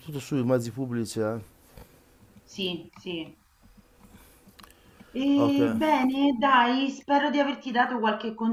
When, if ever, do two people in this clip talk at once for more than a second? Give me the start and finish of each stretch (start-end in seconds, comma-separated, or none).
none